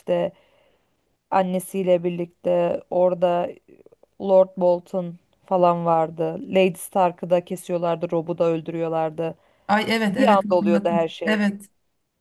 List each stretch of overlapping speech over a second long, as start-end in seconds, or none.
10.1-11.4